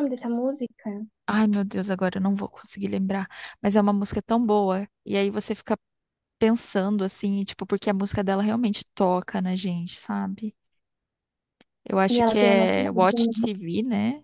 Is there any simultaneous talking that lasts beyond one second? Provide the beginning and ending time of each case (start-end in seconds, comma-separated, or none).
12.1-13.5